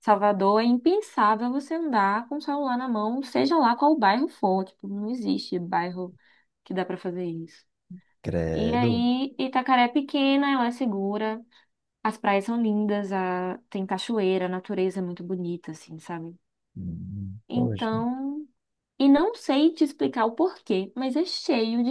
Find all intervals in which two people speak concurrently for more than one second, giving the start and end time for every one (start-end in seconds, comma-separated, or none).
none